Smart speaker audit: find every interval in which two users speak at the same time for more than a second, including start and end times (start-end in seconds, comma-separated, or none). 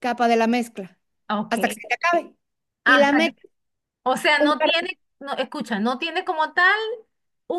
none